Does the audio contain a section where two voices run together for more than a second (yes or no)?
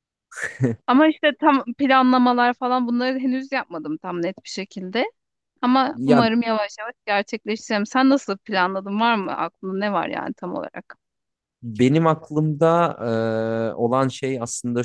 no